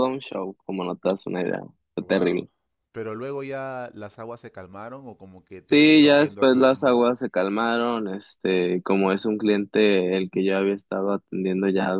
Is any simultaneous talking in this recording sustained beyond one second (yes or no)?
yes